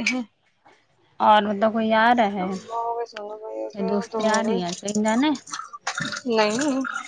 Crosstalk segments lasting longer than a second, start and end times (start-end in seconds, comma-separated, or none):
2.5-4.8